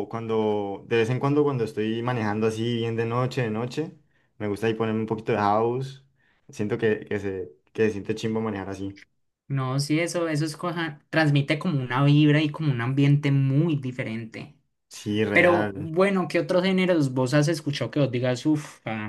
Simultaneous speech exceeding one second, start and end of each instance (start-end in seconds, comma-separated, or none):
none